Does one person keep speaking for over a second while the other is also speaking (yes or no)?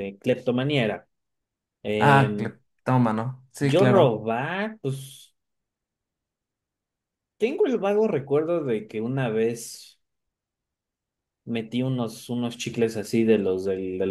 no